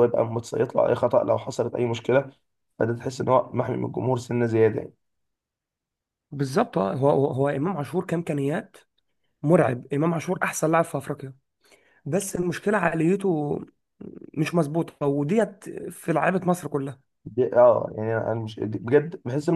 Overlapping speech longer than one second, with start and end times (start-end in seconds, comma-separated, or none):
none